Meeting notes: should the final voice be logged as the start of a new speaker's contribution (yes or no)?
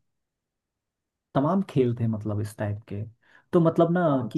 no